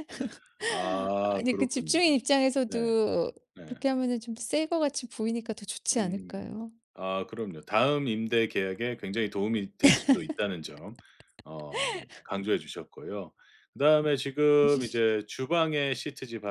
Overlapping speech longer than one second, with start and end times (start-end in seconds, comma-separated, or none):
0.7-2.0